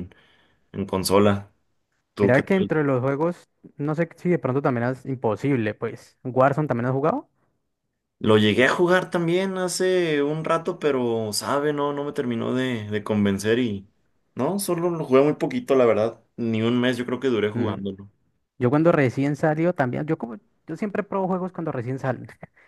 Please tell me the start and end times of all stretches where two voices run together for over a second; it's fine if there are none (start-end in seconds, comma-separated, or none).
none